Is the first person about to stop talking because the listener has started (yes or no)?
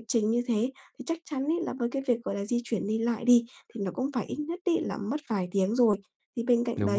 no